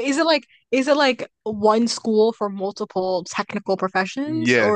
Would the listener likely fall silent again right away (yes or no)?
no